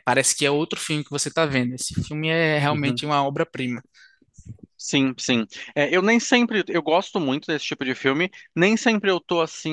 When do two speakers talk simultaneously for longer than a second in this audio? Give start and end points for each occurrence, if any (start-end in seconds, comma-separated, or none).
none